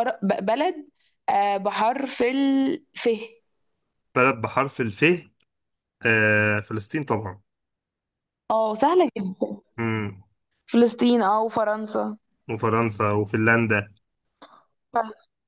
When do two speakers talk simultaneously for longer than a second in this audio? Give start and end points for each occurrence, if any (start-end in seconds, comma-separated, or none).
none